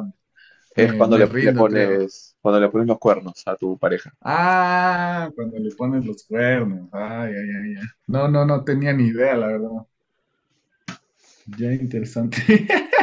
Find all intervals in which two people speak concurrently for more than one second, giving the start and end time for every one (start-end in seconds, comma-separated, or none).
0.8-2.0